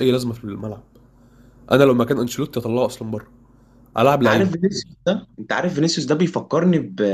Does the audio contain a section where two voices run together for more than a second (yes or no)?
no